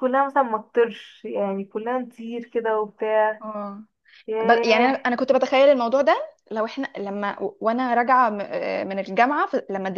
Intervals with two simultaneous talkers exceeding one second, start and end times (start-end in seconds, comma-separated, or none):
none